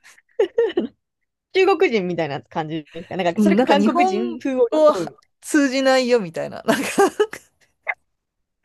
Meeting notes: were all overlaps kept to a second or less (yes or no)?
no